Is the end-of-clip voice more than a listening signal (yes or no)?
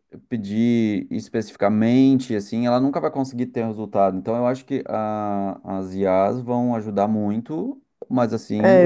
yes